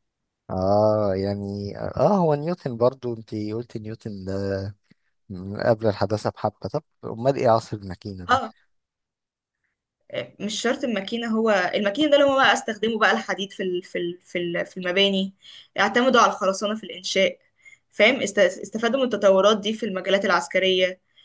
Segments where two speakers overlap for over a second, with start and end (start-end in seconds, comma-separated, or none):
none